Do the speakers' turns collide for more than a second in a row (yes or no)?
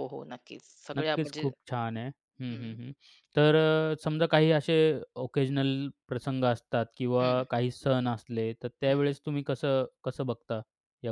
no